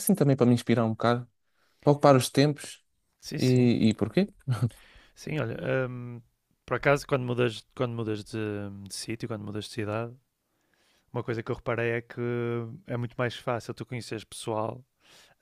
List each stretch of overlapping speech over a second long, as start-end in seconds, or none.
none